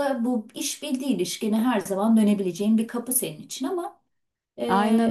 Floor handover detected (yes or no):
yes